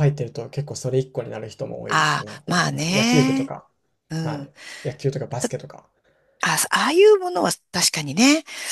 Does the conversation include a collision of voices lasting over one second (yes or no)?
yes